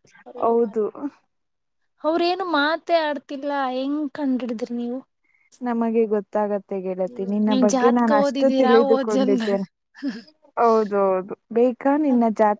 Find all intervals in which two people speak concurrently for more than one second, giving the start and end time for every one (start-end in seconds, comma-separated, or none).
7.5-9.6